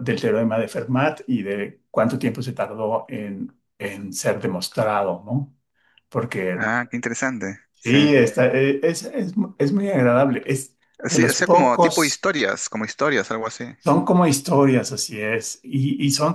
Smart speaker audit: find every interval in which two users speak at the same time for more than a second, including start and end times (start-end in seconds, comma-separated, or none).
11.1-12.3